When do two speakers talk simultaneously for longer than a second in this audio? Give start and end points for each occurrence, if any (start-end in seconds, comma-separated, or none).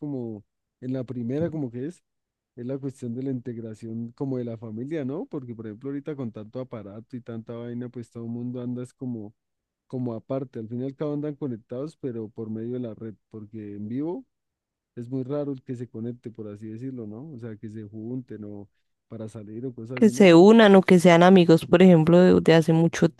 none